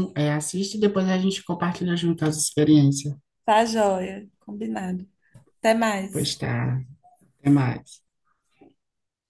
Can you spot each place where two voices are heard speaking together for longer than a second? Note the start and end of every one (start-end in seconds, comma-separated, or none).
none